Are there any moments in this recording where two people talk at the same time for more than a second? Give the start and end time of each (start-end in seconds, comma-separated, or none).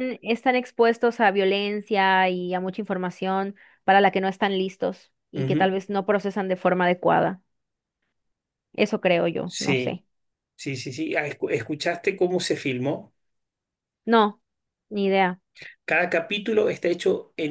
none